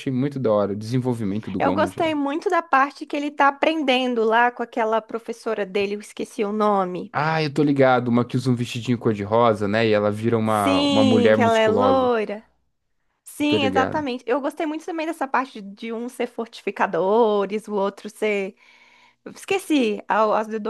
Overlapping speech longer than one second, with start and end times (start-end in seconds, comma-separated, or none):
10.4-12.1